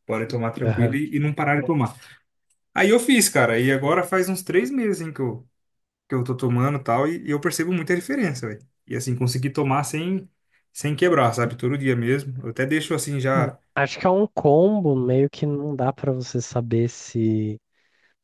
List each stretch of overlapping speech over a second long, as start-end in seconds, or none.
none